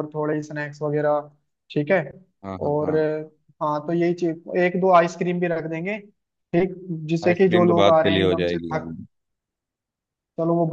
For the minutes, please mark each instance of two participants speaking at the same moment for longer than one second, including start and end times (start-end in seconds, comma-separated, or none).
7.2-8.8